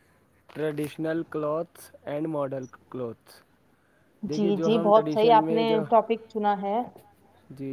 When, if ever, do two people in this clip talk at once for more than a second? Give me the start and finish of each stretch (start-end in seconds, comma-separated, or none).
none